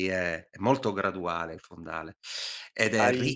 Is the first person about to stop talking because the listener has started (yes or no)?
yes